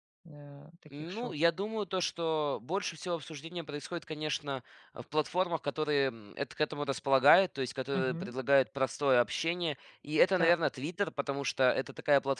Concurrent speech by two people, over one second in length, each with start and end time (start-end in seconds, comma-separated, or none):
none